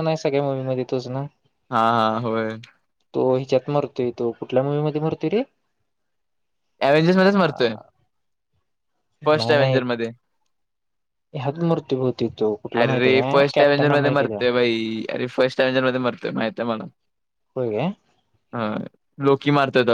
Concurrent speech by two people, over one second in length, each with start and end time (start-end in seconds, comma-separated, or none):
12.8-14.4